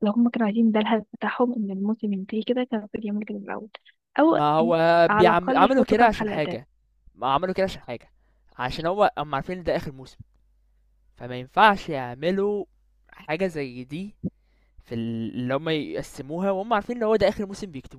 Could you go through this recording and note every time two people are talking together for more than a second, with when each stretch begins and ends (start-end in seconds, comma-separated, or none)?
5.1-6.6